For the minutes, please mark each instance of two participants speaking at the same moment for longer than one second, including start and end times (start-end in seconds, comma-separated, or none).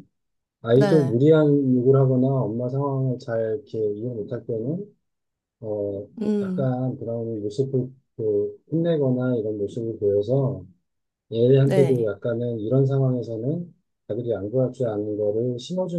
none